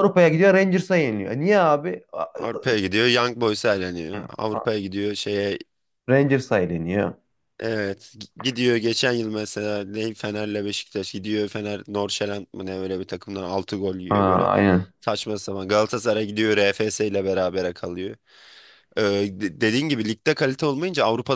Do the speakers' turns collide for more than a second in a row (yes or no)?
no